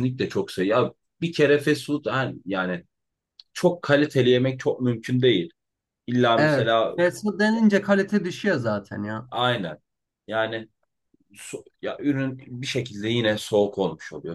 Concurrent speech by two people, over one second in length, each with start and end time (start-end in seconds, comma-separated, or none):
none